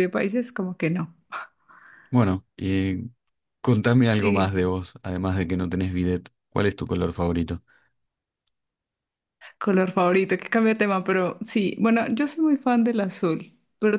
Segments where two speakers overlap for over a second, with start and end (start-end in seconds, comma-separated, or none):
none